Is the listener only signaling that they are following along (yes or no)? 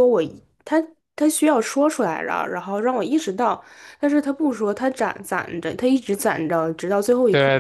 no